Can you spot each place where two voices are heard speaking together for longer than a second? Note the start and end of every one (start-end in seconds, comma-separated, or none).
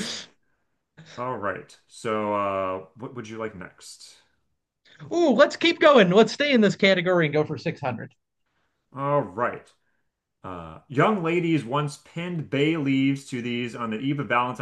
none